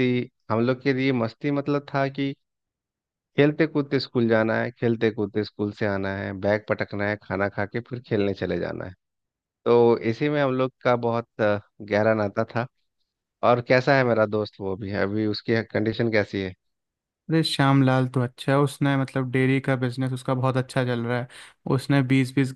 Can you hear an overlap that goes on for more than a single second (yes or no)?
no